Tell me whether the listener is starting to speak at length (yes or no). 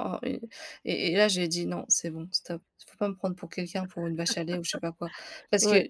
no